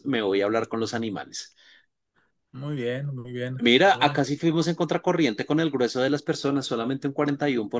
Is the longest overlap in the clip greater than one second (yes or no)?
no